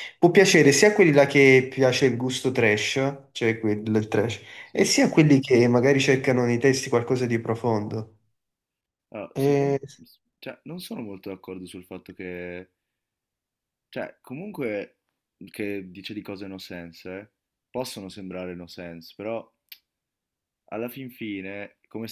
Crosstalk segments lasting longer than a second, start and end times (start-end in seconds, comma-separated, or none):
none